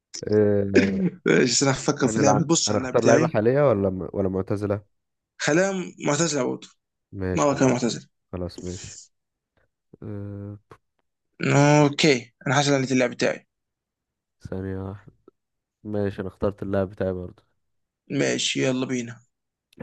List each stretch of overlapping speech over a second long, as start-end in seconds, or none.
2.0-3.4